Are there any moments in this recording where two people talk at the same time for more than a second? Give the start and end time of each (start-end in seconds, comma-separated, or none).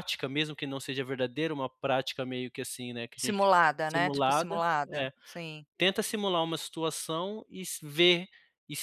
3.1-5.1